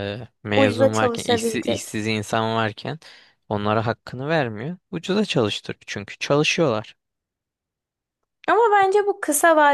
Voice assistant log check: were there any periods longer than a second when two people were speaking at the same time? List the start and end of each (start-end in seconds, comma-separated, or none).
0.6-2.0